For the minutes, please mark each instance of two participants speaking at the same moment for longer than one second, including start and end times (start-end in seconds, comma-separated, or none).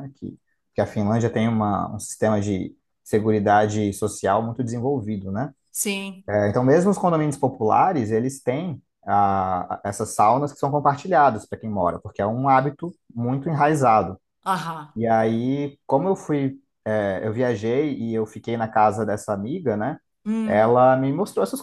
none